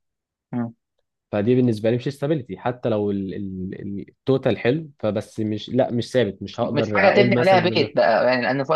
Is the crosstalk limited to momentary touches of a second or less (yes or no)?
no